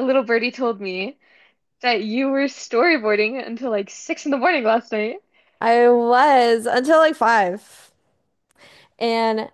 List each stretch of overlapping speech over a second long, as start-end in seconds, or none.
none